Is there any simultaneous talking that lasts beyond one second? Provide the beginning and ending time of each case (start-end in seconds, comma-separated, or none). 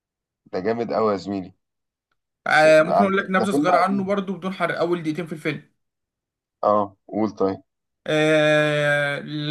2.5-4.1